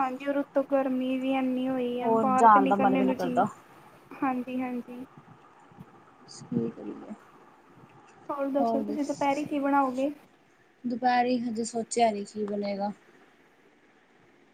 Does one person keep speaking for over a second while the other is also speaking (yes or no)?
yes